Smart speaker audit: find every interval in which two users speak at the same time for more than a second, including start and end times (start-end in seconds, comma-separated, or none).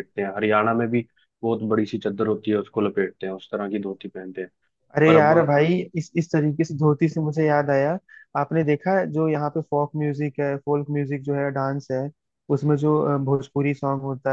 none